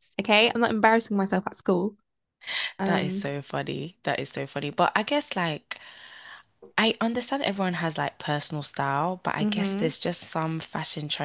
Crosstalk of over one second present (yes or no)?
no